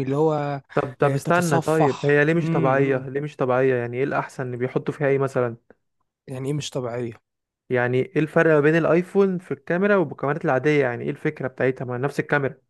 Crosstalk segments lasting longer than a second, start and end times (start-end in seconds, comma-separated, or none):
1.0-3.1